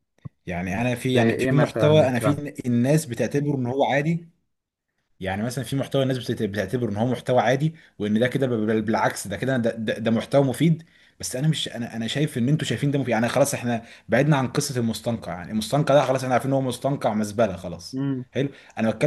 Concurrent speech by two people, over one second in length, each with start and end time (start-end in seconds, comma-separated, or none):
1.1-2.4